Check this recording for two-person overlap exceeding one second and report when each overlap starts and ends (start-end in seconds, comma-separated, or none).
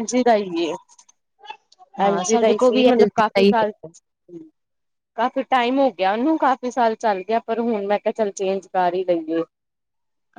2.1-3.7